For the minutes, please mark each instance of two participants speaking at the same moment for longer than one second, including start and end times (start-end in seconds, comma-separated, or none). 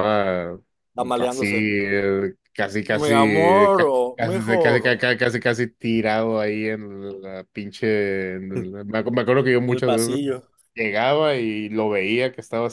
3.0-4.9